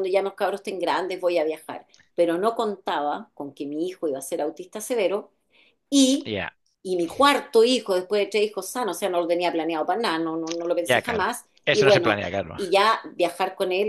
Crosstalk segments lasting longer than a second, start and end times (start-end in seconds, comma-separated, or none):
10.8-12.6